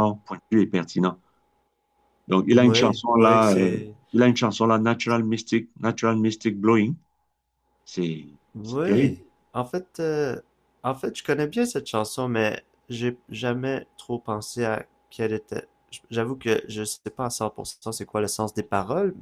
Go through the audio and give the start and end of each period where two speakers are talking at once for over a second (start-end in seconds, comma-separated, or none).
2.5-3.8